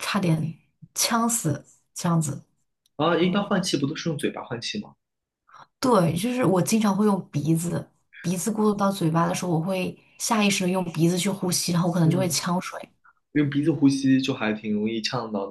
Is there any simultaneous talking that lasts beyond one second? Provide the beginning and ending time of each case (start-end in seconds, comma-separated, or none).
none